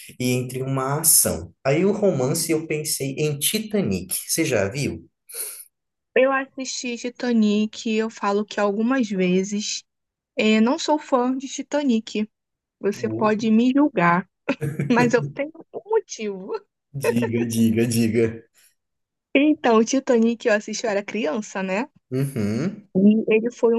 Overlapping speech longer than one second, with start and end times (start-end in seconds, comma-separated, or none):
none